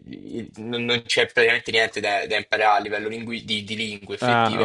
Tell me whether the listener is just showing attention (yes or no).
yes